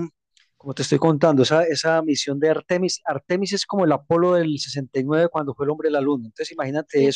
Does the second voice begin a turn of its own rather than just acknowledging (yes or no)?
no